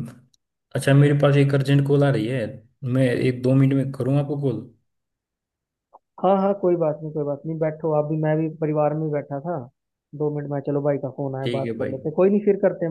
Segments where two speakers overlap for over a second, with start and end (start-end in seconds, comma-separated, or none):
none